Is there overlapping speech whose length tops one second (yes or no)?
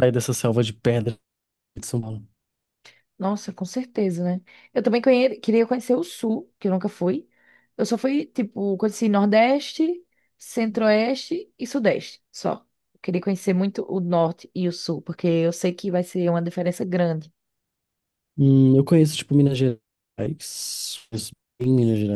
no